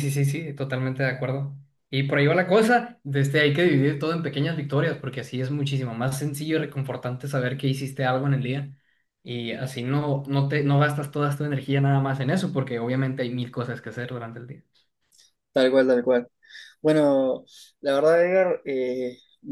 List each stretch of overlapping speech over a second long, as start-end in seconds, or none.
none